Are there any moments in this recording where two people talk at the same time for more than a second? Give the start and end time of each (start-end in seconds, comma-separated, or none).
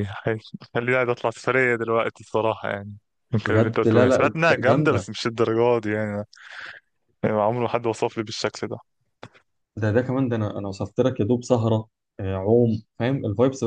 3.5-5.1